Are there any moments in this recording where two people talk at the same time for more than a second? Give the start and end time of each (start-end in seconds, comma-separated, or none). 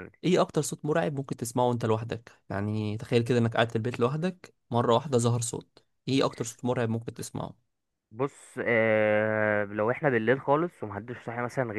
none